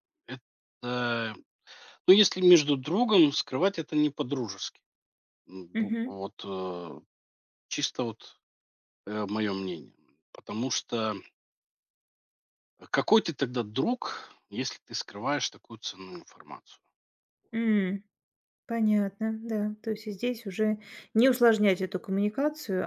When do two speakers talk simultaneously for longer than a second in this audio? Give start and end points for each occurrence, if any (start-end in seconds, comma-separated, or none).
none